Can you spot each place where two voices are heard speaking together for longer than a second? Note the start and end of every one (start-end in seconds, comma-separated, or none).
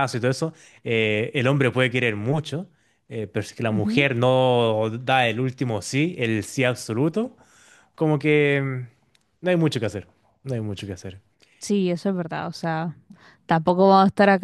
none